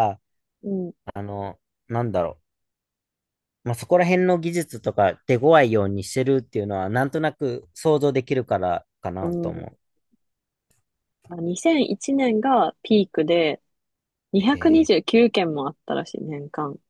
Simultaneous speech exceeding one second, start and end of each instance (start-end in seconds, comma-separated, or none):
none